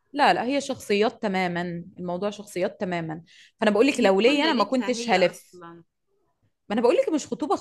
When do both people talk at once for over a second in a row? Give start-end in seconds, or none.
3.9-5.6